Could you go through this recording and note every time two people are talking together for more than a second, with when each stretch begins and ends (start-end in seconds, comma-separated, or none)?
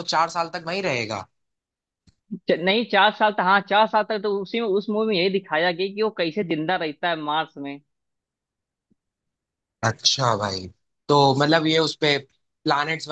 none